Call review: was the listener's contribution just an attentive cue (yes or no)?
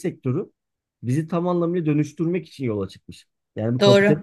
yes